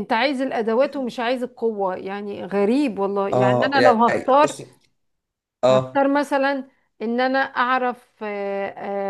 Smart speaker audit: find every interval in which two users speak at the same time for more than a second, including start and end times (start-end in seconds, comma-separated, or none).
3.3-4.6